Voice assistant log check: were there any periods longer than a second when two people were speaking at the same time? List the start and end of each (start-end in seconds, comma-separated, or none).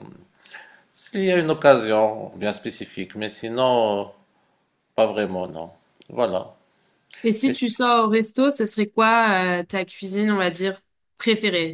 none